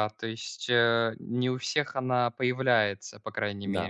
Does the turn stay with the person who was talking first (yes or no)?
no